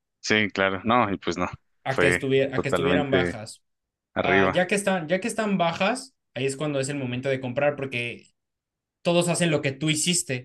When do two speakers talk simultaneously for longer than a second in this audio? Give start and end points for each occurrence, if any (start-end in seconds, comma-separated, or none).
1.9-3.4